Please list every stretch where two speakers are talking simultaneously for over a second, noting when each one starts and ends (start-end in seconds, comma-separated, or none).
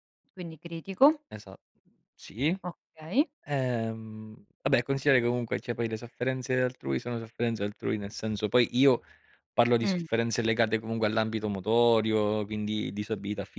none